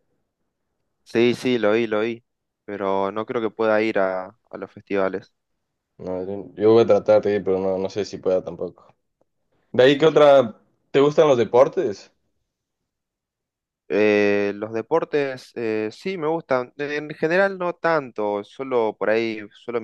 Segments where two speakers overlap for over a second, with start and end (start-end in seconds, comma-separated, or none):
none